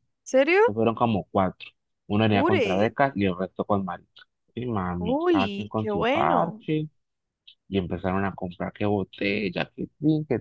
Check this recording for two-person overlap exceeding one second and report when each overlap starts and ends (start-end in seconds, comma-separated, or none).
5.0-6.7